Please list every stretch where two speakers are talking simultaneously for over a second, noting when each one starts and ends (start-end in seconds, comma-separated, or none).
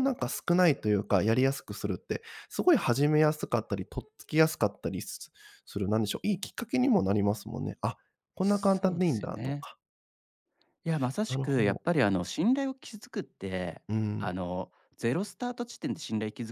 8.4-9.7